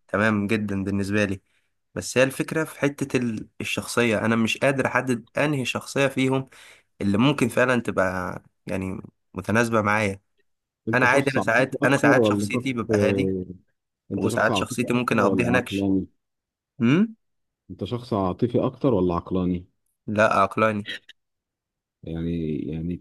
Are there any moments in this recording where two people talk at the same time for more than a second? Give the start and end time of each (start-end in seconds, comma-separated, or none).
10.9-13.3, 14.2-15.9